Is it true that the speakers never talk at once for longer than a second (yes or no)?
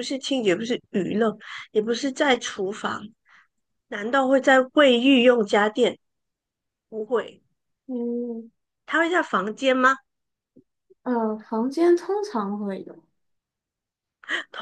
yes